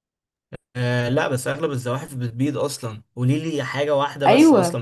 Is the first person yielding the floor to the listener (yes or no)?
yes